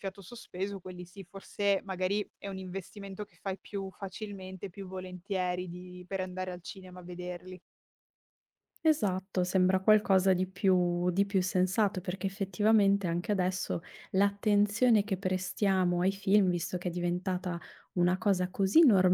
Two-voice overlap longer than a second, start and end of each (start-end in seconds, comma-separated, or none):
none